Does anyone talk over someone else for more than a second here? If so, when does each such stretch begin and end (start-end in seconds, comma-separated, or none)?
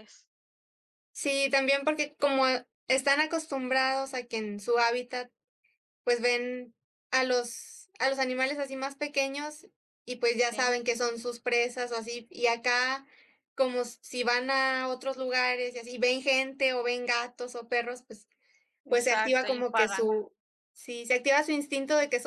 18.9-20.1